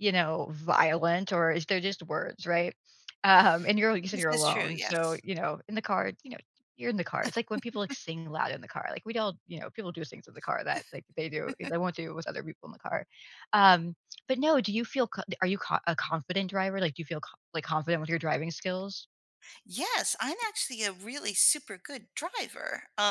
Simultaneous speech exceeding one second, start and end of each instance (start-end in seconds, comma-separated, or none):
4.0-5.2